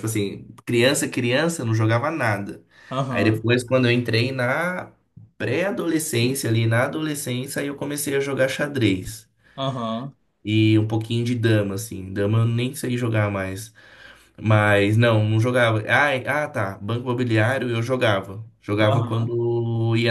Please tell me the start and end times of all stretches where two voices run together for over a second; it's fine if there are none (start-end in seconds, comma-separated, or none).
none